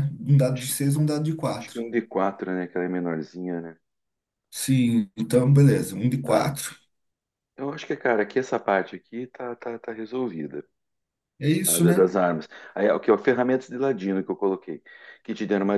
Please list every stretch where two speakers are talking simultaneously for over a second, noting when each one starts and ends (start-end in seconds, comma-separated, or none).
none